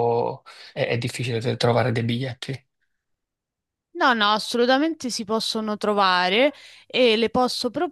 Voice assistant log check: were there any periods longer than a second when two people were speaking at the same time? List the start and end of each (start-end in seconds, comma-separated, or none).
none